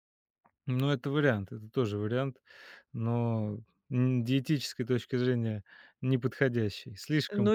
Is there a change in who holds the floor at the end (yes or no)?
yes